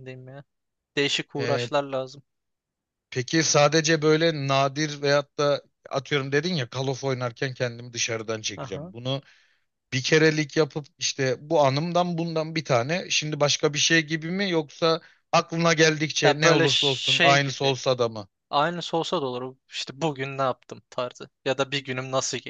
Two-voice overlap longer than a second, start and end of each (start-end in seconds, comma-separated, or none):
16.2-17.8